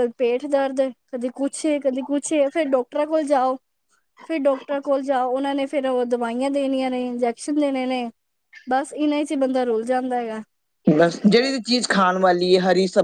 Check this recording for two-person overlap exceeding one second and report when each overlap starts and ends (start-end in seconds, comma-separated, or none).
none